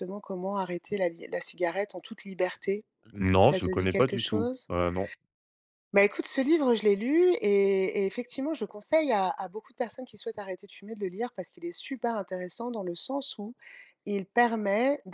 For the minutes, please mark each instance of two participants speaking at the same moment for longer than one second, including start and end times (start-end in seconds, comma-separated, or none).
3.4-4.7